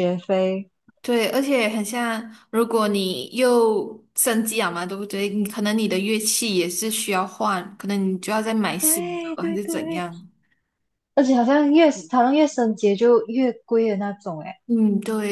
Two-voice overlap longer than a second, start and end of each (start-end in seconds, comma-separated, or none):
8.8-10.1